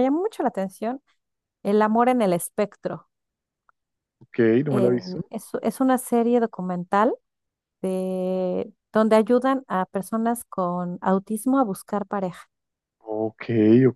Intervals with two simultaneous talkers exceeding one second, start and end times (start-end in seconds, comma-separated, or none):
none